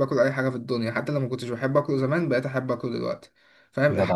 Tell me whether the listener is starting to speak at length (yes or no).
no